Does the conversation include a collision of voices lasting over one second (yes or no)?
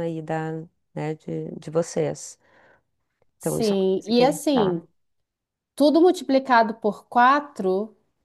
yes